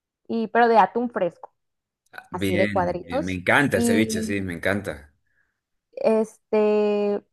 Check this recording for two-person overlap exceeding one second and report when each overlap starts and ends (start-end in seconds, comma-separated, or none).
2.3-4.3